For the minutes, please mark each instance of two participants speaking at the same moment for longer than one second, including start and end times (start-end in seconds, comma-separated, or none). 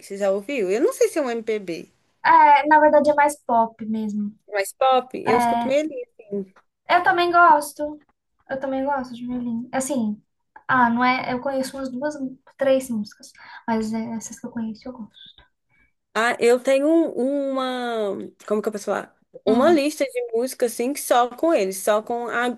none